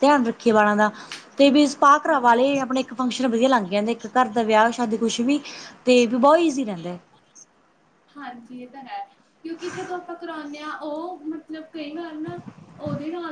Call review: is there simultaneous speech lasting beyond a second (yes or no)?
no